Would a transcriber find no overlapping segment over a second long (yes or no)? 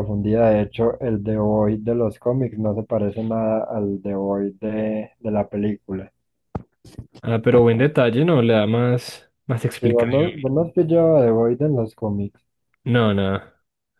yes